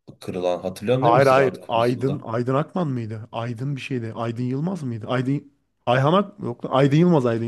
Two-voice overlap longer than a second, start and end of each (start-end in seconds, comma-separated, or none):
1.0-2.2